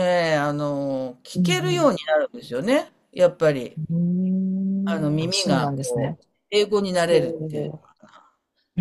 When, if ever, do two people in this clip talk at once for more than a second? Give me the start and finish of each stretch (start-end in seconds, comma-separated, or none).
4.9-6.2